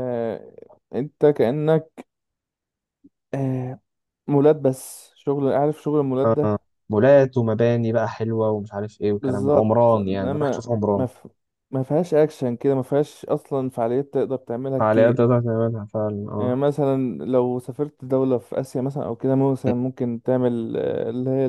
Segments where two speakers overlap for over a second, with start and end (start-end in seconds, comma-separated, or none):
9.2-11.1